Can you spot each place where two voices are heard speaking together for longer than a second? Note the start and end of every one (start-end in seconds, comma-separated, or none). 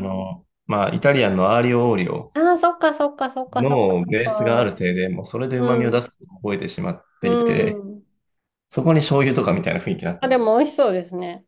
3.5-4.8